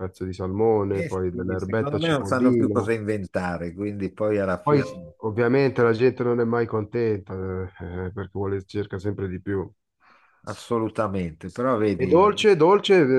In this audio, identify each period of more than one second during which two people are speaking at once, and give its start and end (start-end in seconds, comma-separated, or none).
0.9-2.9